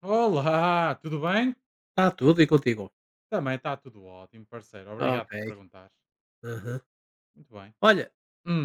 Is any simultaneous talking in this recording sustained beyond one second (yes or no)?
no